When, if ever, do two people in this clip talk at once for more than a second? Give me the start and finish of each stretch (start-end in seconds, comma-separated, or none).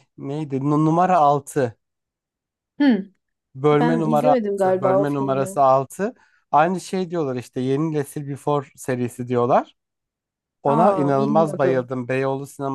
3.8-5.6, 10.7-11.9